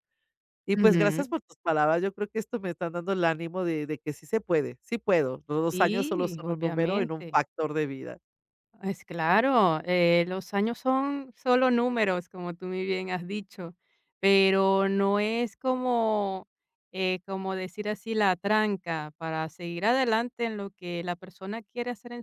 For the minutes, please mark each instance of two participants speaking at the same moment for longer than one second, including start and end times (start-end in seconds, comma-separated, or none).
5.7-7.4